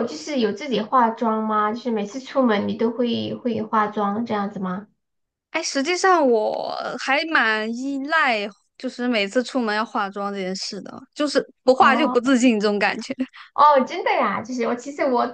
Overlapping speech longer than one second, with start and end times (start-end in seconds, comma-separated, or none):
none